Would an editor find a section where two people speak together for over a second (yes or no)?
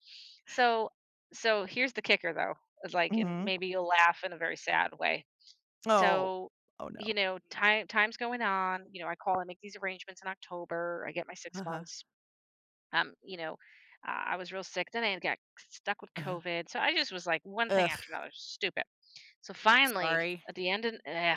no